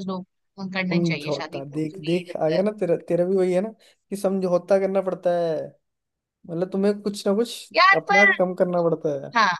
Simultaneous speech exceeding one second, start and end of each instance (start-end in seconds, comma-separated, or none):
0.9-2.6